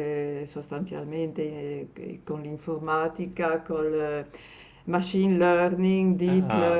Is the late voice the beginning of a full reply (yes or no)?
no